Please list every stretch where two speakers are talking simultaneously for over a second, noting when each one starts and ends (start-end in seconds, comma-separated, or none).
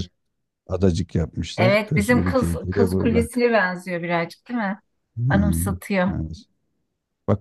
1.6-3.3